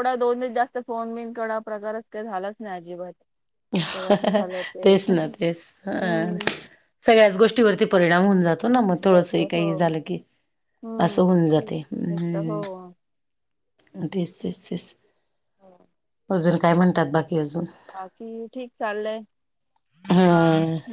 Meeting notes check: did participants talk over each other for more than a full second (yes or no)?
yes